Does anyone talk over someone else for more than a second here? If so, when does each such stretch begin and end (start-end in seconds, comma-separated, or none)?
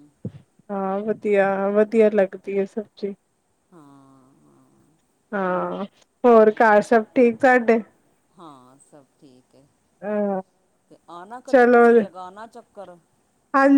none